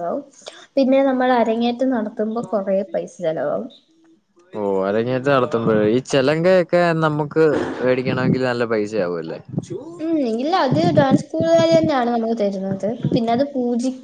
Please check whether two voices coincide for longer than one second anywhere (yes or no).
no